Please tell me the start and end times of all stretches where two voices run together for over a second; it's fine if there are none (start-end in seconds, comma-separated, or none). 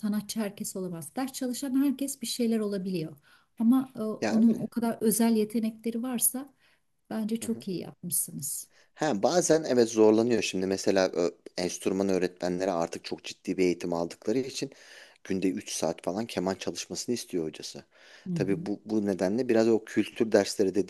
none